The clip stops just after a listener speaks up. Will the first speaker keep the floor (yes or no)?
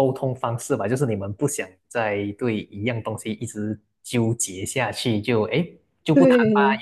yes